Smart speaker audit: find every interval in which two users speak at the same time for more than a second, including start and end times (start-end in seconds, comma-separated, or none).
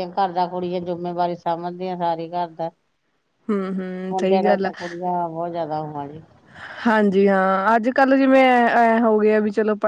none